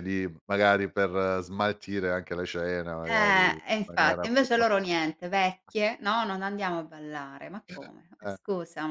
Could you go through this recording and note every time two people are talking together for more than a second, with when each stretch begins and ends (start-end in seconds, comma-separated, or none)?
3.0-4.5